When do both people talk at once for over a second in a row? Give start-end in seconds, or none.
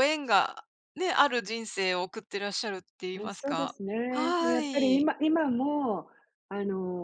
3.2-5.0